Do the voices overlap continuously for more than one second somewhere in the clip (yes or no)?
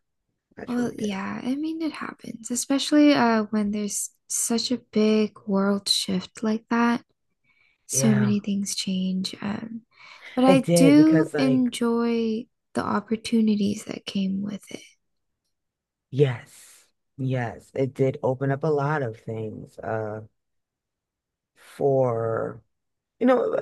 yes